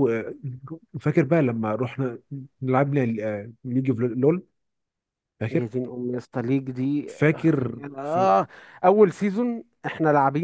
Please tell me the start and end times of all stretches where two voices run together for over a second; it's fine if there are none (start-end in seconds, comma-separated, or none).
none